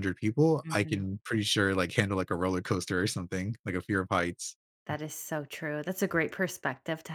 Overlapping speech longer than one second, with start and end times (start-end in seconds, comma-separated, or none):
none